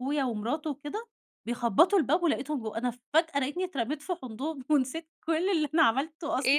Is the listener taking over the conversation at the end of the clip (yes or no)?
yes